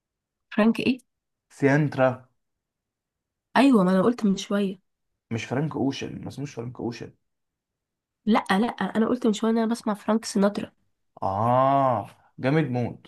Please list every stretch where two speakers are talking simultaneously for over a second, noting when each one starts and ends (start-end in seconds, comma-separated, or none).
none